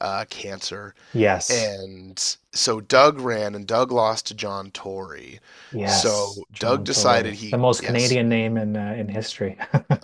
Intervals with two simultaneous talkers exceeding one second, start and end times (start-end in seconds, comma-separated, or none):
5.8-8.2